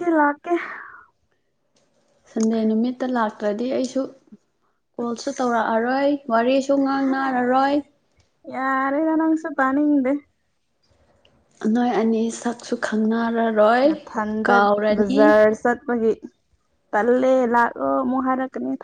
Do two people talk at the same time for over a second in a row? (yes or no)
no